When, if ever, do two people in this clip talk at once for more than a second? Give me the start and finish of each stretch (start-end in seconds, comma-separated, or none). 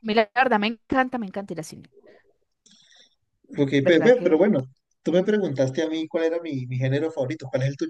none